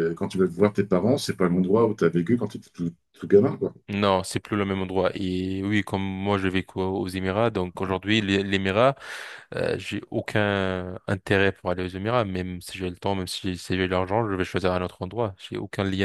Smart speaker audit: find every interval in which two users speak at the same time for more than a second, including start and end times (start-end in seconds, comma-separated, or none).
none